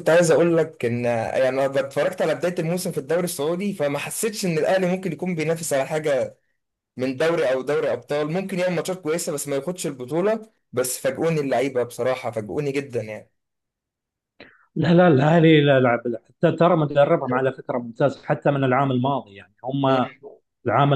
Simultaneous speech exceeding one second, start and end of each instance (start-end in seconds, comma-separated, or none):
none